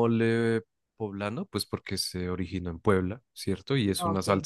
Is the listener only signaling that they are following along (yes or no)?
yes